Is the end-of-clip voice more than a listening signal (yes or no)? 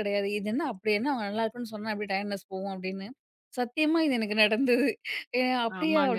yes